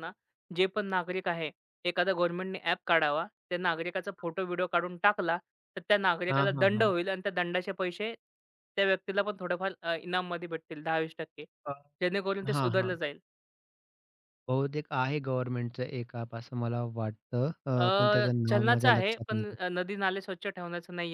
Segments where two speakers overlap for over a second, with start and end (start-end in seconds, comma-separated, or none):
17.7-19.5